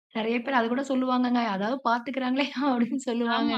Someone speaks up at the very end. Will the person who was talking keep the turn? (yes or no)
no